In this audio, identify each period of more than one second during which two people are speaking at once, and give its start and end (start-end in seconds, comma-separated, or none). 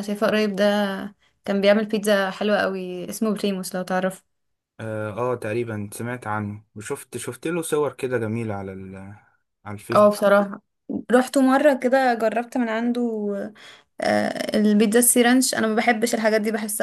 none